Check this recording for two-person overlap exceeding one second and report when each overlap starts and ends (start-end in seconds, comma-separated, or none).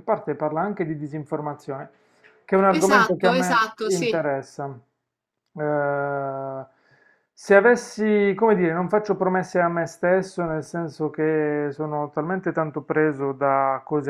2.7-4.3